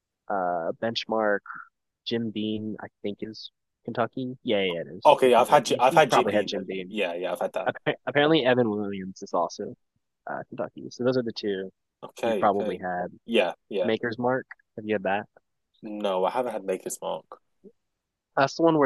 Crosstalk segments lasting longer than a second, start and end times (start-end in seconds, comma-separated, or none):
5.0-7.0